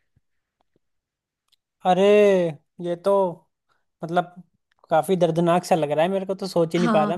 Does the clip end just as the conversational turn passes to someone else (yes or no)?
yes